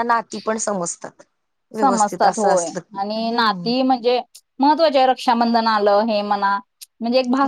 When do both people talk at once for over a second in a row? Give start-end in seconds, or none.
1.7-3.9